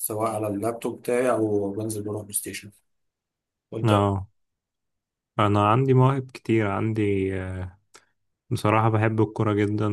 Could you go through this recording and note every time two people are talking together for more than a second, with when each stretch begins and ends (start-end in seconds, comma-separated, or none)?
none